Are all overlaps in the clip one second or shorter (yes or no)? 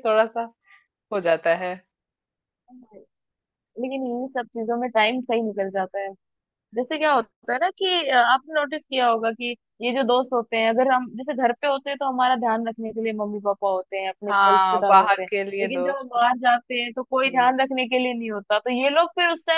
no